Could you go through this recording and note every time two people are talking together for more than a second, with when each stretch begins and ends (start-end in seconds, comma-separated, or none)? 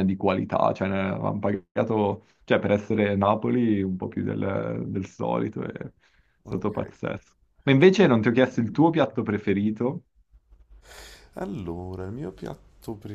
none